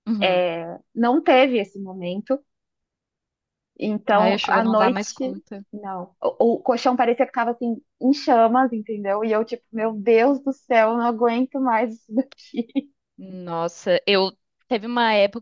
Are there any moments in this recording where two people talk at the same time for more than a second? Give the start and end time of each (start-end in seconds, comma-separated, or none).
4.1-5.3